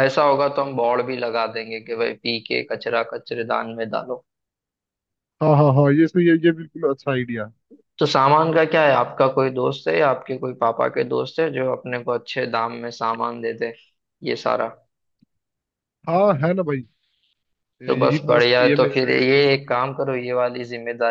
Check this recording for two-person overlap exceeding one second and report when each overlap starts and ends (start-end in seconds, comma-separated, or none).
17.9-20.0